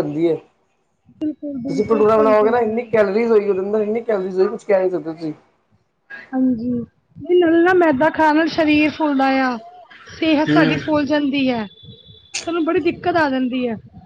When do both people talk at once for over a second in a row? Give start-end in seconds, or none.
1.7-2.9